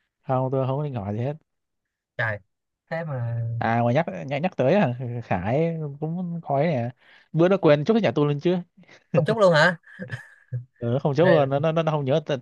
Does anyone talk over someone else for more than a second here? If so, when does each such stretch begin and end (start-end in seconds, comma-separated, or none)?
none